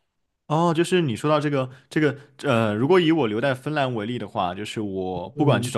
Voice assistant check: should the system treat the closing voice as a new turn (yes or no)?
no